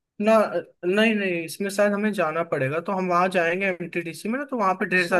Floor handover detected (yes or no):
no